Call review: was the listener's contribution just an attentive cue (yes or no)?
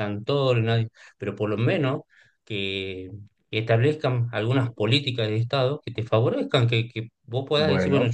yes